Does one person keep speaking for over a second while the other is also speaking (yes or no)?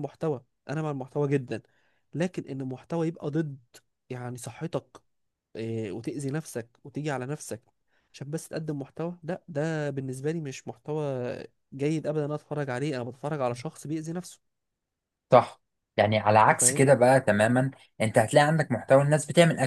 no